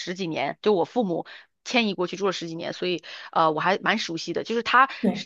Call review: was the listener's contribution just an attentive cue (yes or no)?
yes